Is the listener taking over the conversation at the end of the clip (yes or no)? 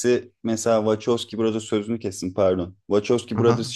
no